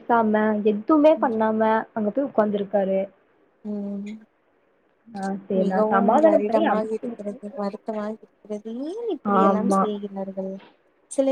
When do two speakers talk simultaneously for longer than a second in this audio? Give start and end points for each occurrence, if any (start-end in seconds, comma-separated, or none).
5.6-7.4